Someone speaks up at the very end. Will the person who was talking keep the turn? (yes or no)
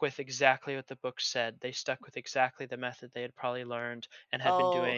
yes